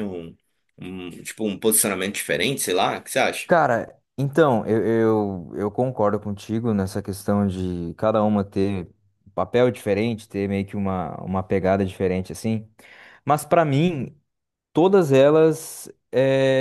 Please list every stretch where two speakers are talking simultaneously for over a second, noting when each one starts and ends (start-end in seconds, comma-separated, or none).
none